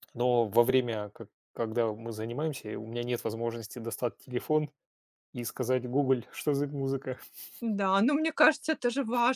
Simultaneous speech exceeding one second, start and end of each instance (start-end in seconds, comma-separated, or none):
none